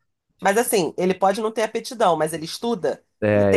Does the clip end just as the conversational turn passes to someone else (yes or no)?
yes